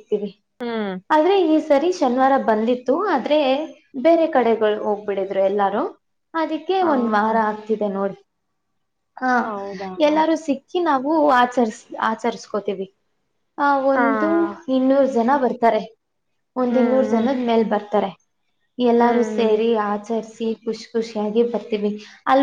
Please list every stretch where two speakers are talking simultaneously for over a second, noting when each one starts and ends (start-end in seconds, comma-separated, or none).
none